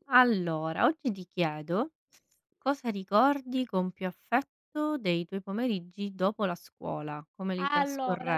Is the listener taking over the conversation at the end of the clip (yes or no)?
yes